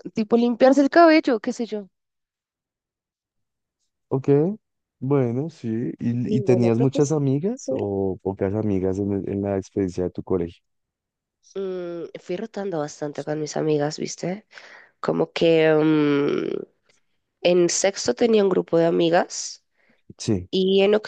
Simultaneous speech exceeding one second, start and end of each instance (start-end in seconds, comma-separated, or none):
6.3-7.8